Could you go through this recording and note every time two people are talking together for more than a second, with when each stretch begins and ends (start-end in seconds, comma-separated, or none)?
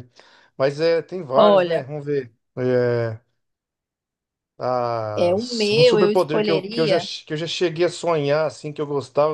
5.2-7.1